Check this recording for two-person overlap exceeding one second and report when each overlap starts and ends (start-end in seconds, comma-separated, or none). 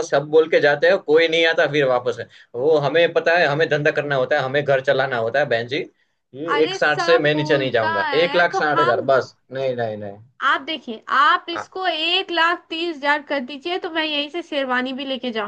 6.5-9.1